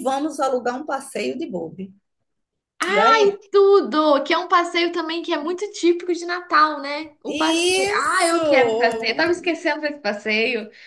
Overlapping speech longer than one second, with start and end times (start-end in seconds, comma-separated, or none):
7.3-8.6